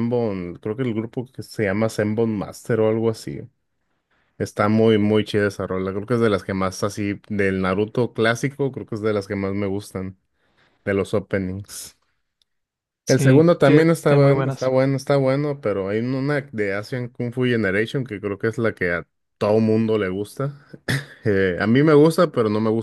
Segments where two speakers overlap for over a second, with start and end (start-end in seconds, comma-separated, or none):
13.1-14.7